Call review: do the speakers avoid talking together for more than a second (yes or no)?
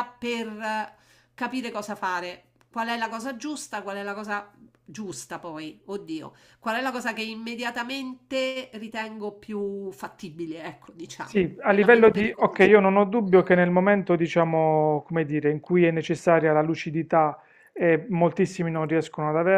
no